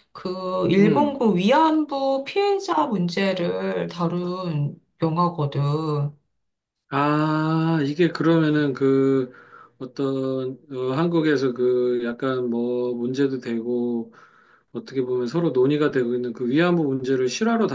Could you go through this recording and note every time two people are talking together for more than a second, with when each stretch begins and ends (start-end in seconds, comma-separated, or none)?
none